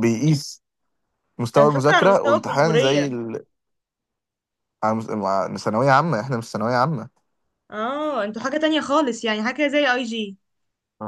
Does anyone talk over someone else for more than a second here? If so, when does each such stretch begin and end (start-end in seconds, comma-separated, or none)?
1.6-3.1